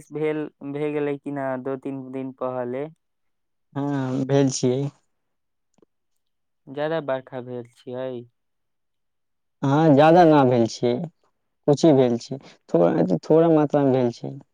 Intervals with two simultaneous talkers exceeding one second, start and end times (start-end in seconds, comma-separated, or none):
none